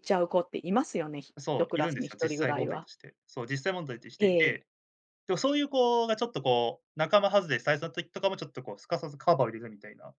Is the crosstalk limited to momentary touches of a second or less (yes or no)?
no